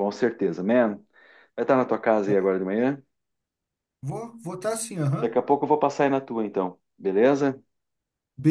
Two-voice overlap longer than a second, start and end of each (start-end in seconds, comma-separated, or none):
none